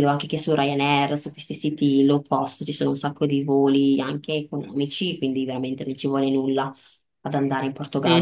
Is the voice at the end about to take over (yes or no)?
yes